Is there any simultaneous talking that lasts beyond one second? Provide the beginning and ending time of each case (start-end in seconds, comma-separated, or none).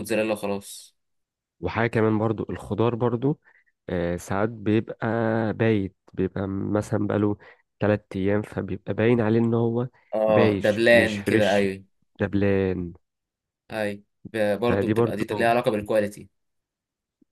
10.3-11.6